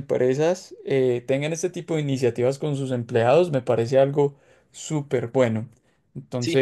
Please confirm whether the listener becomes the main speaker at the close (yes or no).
no